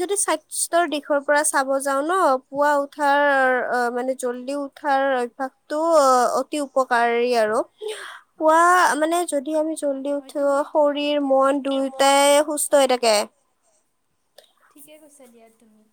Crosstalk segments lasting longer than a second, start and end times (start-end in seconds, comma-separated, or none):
10.2-12.0